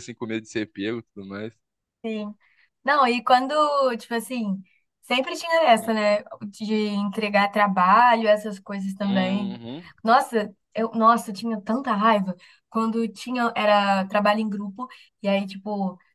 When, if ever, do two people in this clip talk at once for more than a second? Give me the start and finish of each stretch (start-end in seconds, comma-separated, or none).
none